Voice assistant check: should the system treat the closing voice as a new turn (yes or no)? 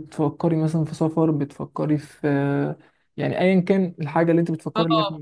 yes